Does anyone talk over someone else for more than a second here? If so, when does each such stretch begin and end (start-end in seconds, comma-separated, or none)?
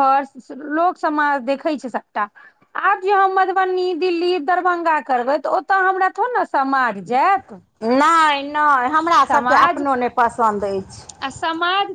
none